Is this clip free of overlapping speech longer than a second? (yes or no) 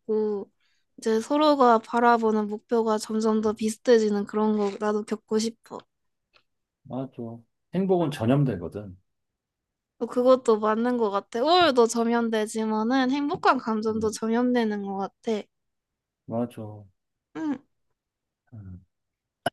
yes